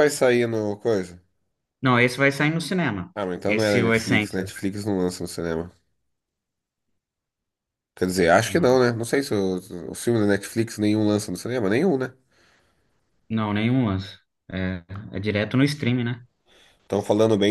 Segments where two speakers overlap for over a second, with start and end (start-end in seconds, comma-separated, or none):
3.1-4.5